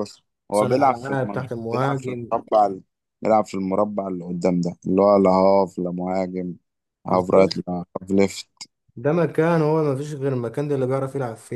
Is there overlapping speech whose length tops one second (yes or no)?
yes